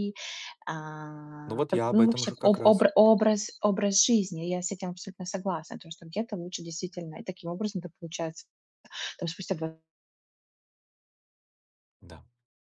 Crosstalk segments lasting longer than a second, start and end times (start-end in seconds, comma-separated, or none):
1.4-2.9